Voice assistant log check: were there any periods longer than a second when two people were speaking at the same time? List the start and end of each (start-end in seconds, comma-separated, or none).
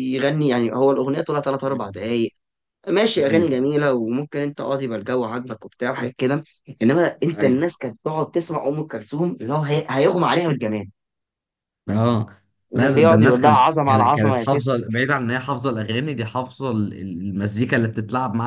12.8-14.7